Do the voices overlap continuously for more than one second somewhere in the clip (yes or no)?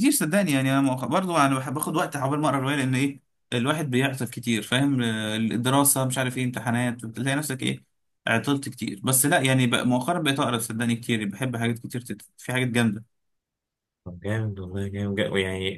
no